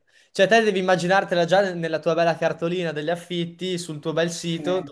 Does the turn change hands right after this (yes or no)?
no